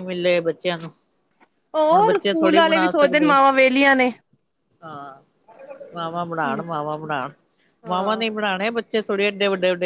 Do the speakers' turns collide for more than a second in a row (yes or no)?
yes